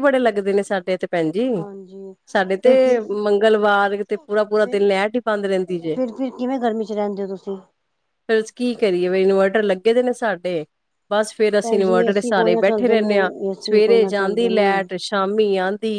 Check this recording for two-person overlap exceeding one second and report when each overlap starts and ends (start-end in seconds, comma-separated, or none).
11.6-14.7